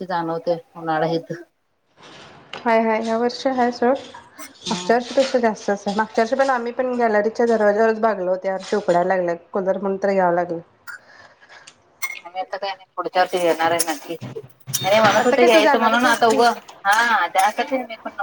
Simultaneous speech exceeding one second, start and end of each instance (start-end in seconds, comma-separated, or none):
15.2-16.4